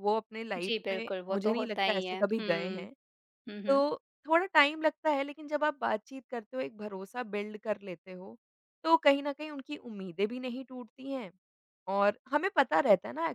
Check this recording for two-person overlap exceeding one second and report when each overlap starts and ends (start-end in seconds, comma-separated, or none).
0.6-2.9